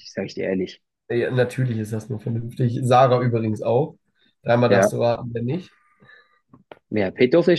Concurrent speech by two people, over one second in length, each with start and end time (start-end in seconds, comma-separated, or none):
none